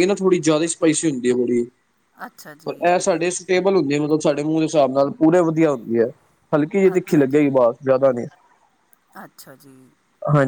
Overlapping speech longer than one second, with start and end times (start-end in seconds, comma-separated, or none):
none